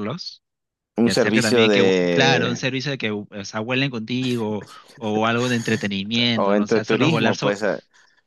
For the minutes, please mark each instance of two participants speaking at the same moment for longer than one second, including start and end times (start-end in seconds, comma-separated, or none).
1.0-2.6, 6.3-7.6